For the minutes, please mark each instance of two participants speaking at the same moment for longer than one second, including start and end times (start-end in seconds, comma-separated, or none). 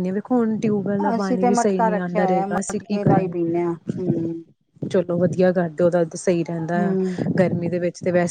1.1-3.5